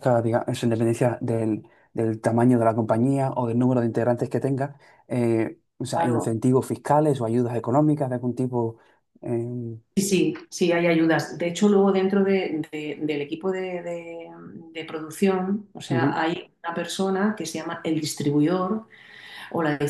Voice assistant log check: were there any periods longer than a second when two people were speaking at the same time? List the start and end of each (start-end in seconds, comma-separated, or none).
none